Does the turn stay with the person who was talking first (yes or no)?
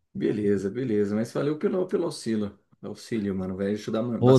no